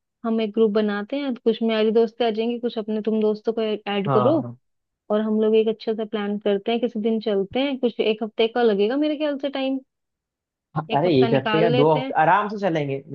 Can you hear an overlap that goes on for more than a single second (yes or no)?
yes